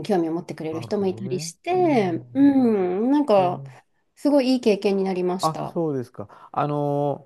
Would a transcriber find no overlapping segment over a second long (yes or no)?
no